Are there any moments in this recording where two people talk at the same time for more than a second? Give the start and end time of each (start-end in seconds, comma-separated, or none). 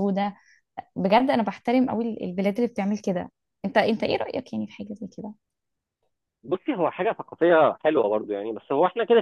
none